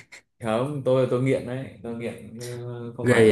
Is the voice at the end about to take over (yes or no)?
no